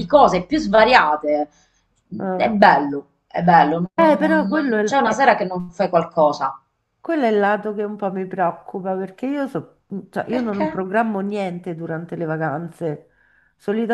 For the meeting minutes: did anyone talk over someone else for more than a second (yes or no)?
yes